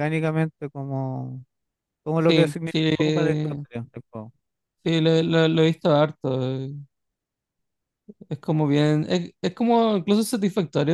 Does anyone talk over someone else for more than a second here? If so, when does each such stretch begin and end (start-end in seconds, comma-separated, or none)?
2.2-3.6